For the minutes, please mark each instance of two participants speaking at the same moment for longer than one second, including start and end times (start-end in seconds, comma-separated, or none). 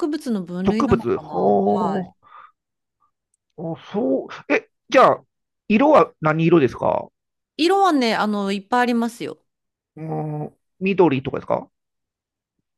0.6-2.1